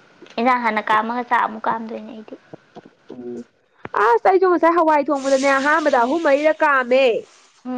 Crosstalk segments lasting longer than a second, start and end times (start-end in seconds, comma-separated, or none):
none